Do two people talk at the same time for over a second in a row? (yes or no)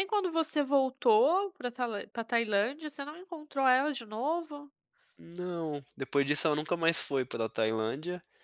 no